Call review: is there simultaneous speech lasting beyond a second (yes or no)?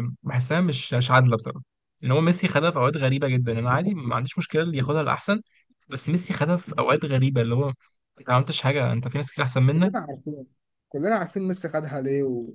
no